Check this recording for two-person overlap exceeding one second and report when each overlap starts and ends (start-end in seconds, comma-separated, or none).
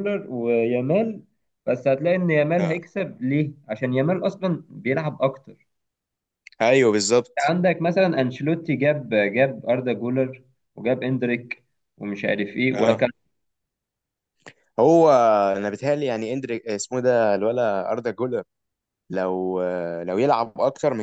none